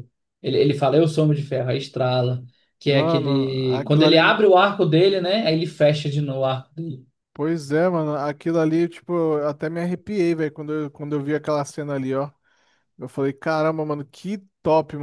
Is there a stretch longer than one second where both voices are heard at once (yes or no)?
yes